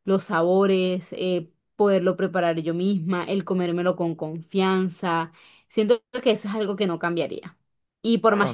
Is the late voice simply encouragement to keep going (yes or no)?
yes